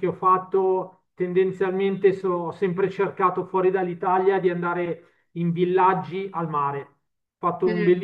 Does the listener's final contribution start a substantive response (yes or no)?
no